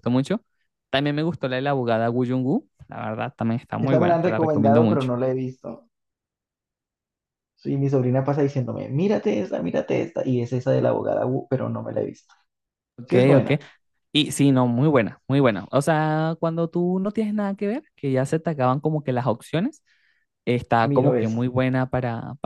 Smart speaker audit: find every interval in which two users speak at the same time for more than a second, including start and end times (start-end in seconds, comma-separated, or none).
3.8-5.1